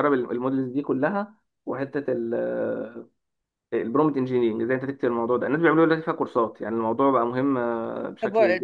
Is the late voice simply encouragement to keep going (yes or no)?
no